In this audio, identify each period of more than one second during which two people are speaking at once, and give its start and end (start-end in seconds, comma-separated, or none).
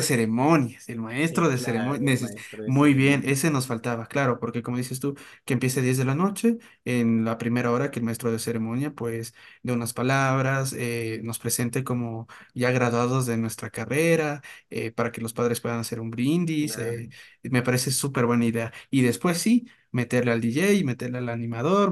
1.3-3.7